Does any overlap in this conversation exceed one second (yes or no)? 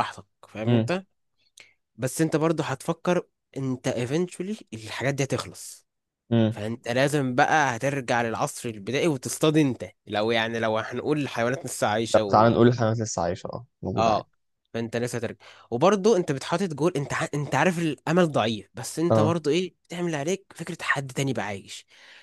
no